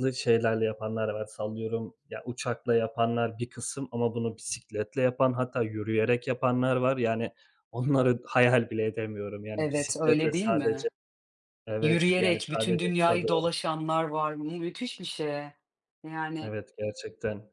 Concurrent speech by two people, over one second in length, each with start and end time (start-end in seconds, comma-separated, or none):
9.6-10.9, 11.8-13.3